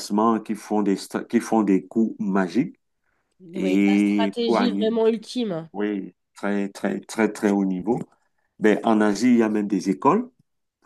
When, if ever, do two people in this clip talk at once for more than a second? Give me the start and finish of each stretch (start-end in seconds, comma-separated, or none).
3.5-4.9